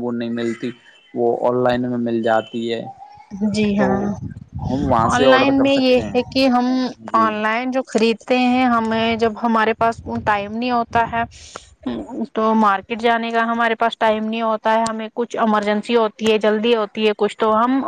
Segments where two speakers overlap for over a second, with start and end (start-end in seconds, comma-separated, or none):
5.1-6.4